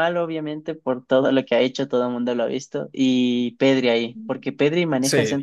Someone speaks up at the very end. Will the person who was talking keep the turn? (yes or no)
yes